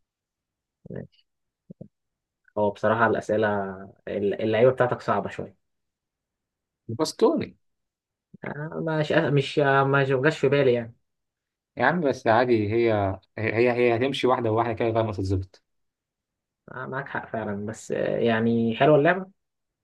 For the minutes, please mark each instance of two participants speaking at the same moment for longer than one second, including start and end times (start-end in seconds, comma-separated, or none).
none